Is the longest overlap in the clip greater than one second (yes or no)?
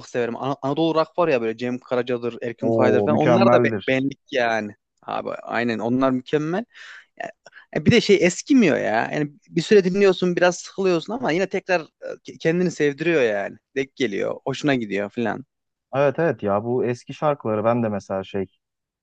yes